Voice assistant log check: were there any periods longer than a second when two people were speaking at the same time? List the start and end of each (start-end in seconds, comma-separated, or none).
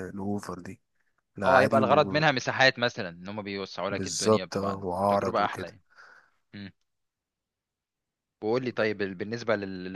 3.9-5.7